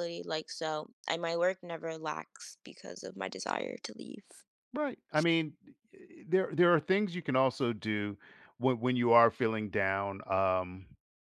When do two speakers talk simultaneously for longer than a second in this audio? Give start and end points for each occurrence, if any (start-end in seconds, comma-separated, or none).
none